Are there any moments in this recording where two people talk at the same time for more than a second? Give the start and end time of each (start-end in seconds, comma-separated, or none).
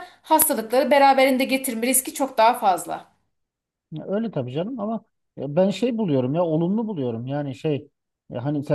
none